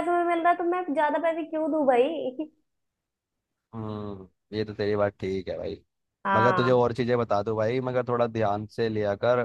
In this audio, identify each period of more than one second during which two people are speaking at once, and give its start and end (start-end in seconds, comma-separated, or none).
none